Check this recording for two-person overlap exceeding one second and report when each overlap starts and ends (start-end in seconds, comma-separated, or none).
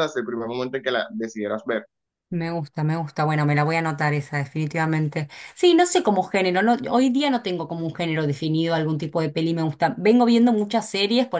none